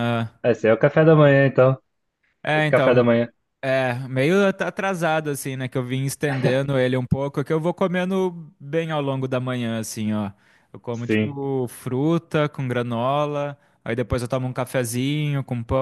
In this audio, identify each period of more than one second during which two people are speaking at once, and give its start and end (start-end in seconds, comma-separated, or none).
none